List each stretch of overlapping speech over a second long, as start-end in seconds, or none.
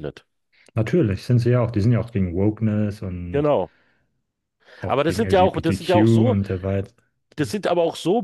4.9-6.4